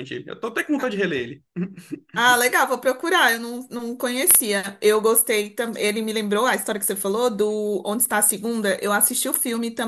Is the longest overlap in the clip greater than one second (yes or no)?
no